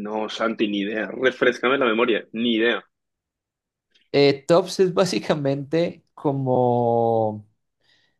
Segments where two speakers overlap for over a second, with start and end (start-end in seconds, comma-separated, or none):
none